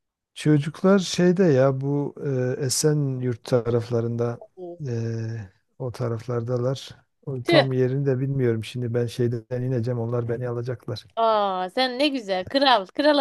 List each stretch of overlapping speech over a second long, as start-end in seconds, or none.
none